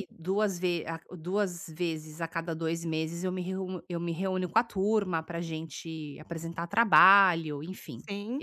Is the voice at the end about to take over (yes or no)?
no